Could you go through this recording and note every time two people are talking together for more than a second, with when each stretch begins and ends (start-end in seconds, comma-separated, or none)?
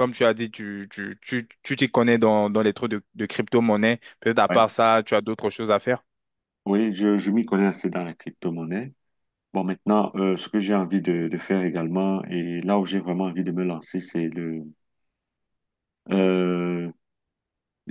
none